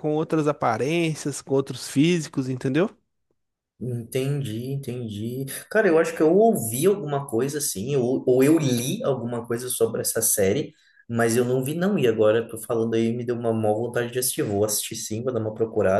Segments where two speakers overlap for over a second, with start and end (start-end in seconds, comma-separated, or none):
none